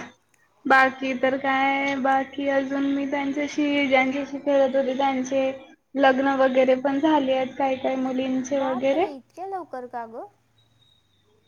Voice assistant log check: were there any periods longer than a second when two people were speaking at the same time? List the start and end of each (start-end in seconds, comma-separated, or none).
none